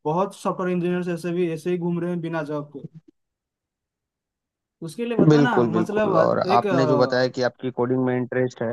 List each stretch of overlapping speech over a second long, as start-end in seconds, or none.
5.3-7.5